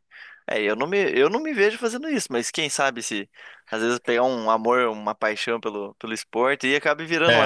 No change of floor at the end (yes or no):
no